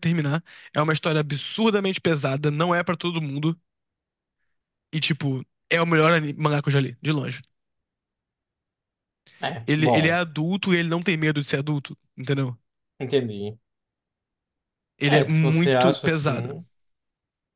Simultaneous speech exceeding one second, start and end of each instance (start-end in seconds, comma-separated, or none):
15.1-16.5